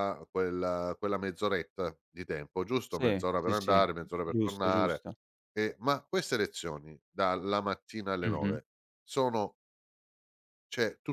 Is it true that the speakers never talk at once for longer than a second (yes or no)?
no